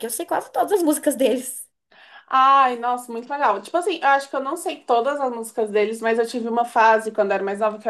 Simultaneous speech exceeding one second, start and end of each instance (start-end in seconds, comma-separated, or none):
none